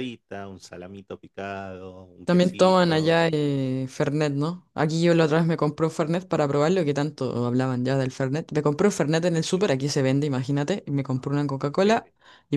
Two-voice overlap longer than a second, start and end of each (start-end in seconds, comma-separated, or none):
2.2-3.6